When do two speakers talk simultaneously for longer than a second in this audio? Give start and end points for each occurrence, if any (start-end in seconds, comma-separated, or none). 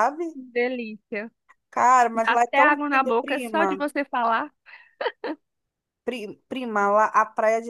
2.1-3.8